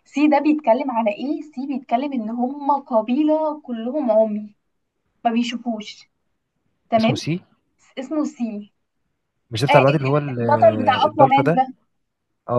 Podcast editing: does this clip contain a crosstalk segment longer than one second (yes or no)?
yes